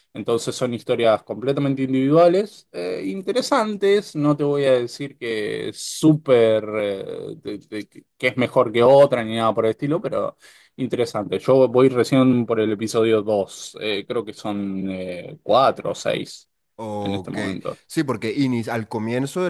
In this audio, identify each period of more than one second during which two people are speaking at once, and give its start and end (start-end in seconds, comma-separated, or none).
none